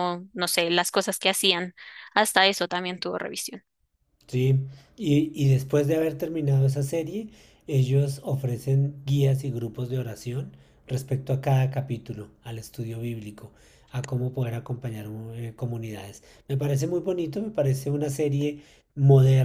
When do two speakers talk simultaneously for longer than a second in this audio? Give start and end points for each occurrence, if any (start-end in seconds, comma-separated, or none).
none